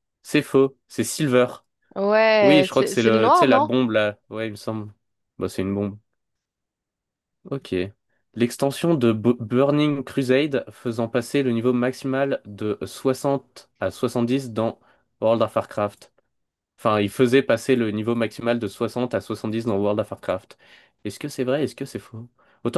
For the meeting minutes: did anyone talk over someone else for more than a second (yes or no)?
yes